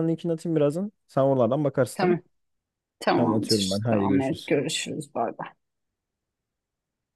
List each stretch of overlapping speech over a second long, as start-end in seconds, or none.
3.1-4.6